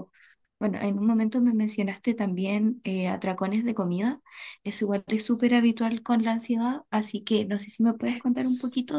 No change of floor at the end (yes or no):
no